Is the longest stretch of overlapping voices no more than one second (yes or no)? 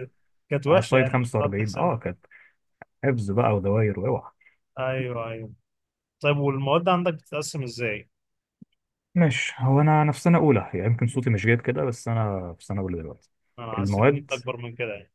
no